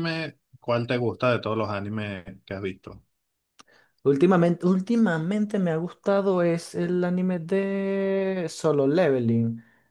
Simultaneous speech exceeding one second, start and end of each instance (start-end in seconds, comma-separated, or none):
none